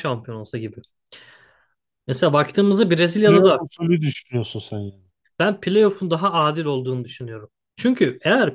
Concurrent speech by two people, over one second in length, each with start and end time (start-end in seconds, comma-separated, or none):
none